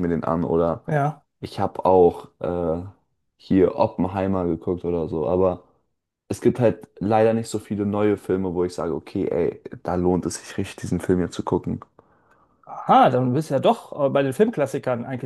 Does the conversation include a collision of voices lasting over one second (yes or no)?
no